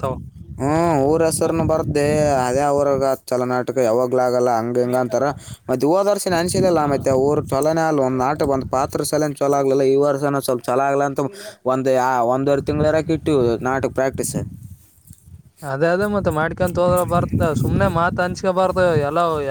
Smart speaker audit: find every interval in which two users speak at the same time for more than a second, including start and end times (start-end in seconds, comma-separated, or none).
none